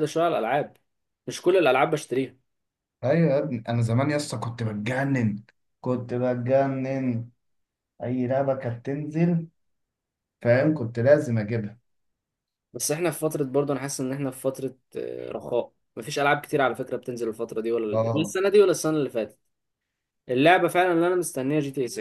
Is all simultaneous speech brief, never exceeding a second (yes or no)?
yes